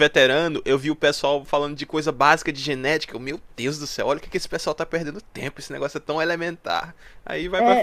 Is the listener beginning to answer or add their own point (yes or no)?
yes